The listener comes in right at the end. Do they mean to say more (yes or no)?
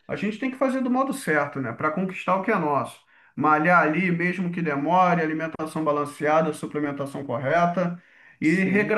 no